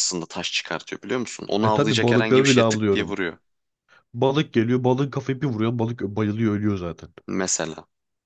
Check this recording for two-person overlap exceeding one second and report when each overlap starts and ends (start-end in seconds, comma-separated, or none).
1.6-3.2